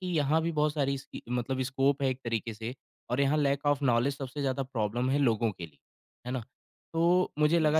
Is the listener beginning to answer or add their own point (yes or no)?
no